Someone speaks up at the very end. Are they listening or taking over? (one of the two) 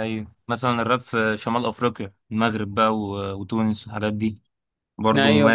taking over